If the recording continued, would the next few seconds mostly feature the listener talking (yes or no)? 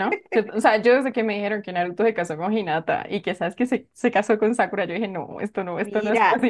yes